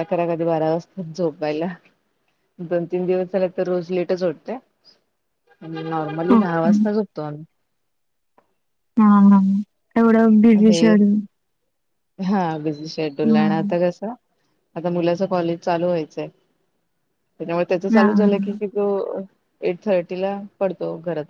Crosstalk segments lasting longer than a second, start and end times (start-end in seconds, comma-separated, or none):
none